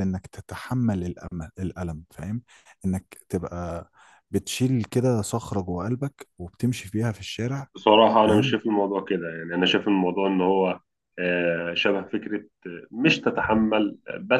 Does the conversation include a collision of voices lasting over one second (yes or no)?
no